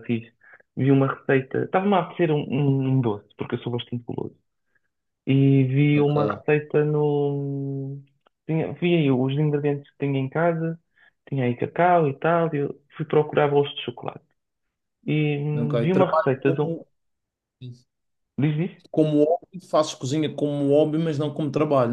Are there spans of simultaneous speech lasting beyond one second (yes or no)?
yes